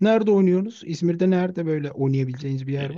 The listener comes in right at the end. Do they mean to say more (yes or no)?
yes